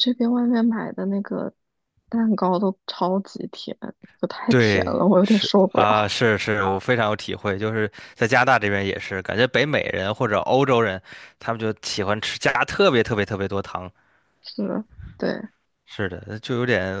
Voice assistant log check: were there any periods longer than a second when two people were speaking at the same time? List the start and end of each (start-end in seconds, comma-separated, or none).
4.5-6.2